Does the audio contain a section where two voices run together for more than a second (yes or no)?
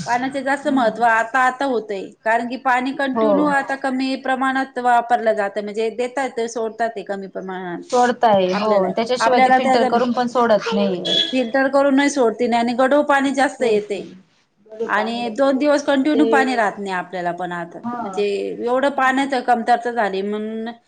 yes